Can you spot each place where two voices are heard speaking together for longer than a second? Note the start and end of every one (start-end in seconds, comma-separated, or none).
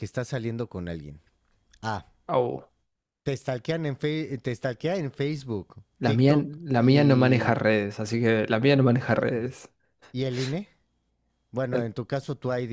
6.0-7.7